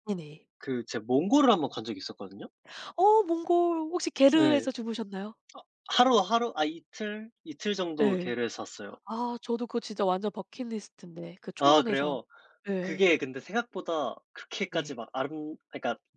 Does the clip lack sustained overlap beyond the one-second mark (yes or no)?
yes